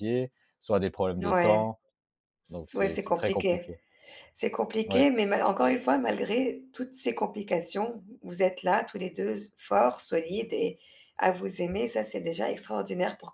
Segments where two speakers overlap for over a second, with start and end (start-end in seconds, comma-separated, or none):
2.5-3.7